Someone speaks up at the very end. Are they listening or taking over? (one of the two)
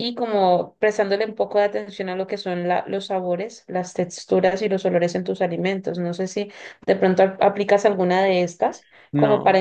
listening